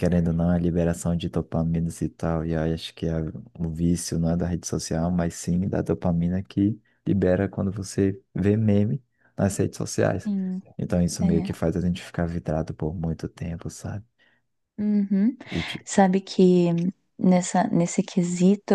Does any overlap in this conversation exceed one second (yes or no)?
no